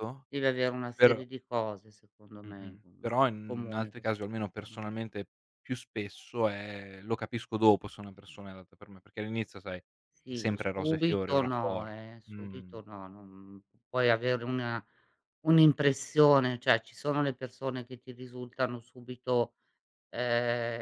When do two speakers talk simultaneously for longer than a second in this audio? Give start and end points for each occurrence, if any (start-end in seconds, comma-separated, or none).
2.5-4.8, 10.3-12.3